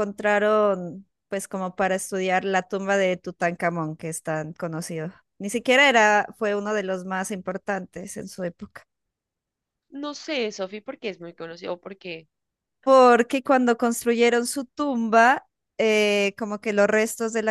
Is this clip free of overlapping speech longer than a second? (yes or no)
yes